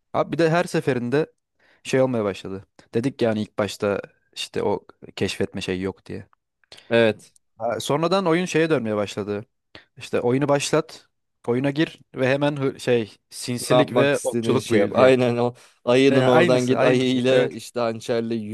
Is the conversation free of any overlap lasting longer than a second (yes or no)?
no